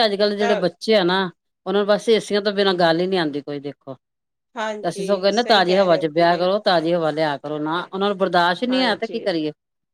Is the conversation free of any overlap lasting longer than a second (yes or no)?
no